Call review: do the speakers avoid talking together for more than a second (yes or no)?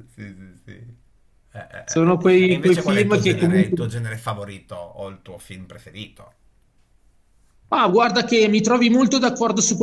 no